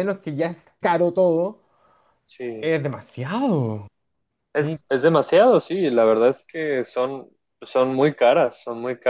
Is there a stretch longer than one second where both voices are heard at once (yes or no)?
no